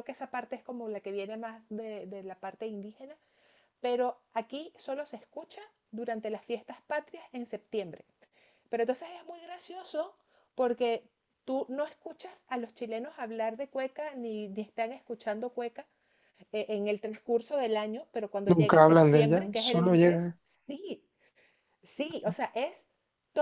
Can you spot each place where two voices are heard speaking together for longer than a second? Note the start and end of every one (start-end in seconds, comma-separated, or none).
18.4-20.3